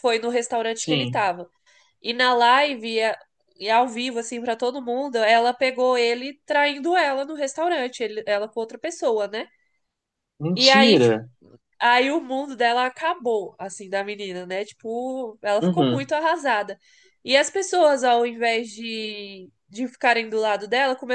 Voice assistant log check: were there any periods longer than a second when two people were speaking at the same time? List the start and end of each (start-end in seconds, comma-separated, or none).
none